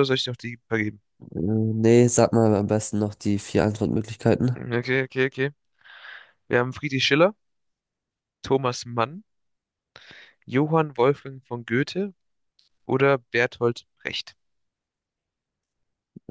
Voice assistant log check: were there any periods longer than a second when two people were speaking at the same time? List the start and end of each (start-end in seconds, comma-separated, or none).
none